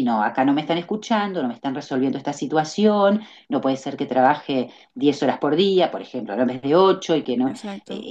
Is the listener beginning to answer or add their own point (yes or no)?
no